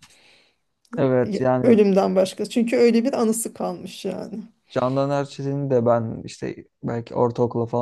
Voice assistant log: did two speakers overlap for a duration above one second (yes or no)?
no